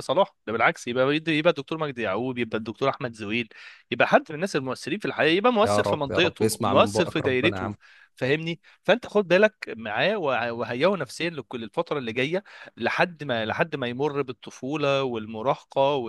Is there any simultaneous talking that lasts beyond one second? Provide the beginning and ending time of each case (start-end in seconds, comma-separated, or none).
5.7-7.8